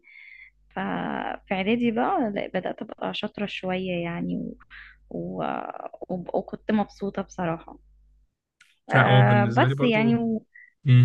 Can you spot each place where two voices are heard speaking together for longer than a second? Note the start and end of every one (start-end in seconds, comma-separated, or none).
8.9-10.2